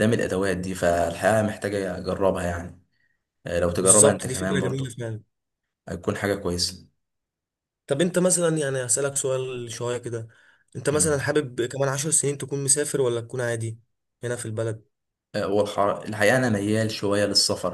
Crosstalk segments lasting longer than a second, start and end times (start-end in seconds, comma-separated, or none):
3.8-5.0